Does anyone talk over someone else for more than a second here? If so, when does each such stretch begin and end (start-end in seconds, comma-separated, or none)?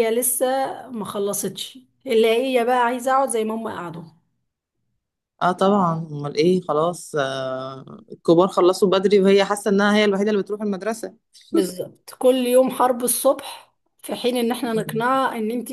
none